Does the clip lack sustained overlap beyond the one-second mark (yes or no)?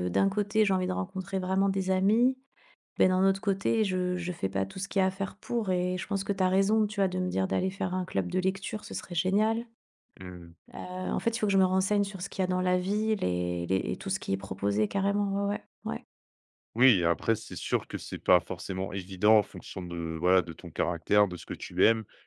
yes